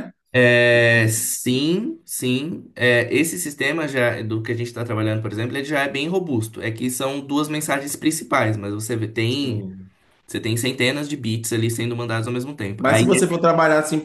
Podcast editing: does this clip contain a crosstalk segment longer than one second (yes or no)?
no